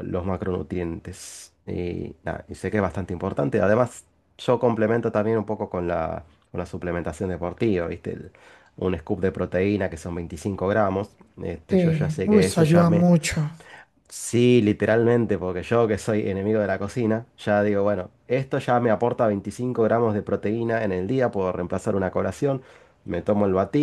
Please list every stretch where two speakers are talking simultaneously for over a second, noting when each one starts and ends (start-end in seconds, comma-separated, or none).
11.7-13.1